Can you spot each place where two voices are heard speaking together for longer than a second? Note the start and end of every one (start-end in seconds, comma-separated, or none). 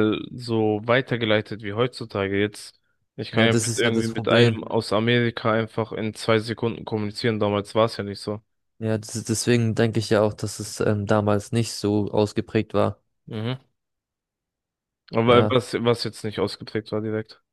3.3-4.6